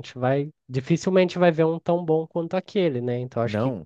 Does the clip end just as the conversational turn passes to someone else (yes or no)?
no